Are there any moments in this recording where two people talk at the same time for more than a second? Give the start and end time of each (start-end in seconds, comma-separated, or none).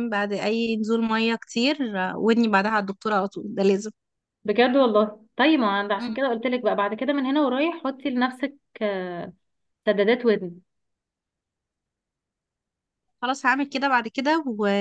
none